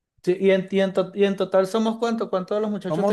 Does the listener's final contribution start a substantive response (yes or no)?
yes